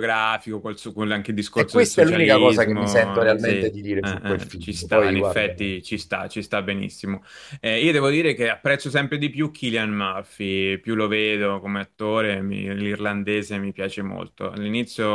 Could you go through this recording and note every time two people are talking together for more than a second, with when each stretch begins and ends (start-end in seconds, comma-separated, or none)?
1.5-5.9